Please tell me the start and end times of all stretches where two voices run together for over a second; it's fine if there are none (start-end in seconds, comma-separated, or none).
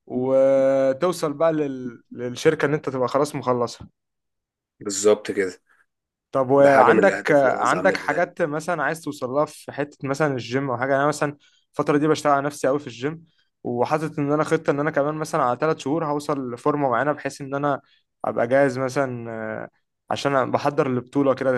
6.6-8.3